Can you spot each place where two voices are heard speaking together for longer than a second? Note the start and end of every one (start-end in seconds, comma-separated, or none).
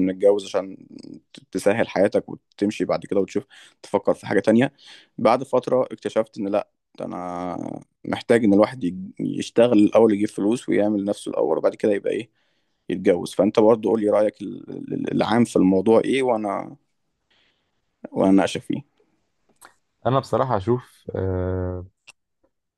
none